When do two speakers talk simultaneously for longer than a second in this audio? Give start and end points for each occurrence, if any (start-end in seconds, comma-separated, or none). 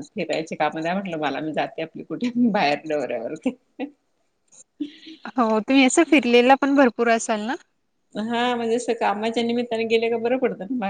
none